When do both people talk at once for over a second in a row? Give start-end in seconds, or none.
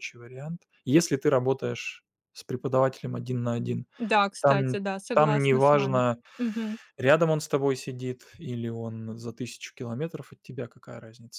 4.4-6.0